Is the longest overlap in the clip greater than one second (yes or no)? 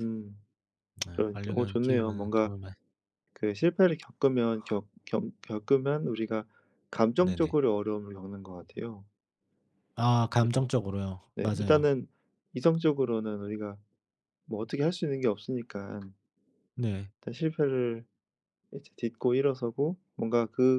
yes